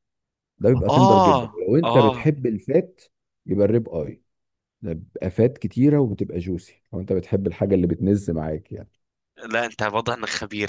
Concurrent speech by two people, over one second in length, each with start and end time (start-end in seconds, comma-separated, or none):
0.9-2.3